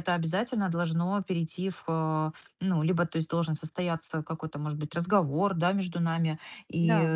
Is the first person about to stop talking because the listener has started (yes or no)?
no